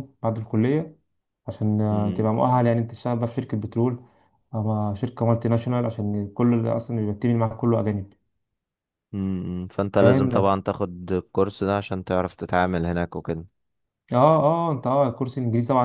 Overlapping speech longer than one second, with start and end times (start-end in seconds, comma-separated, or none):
none